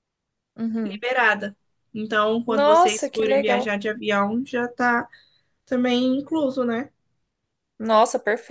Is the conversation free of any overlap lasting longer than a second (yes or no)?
no